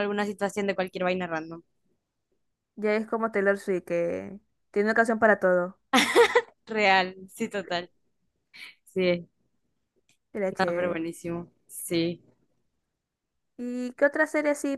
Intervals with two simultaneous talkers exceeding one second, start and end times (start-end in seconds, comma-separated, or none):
none